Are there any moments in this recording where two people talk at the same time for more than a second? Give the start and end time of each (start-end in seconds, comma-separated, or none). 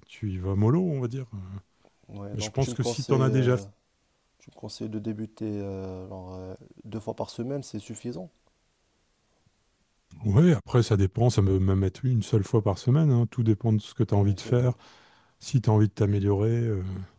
2.3-3.6